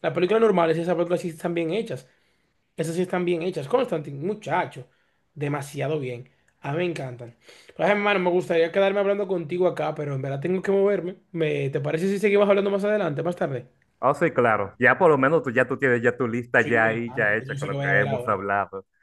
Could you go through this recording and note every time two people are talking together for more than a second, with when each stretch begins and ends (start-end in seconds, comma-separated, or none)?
16.6-18.4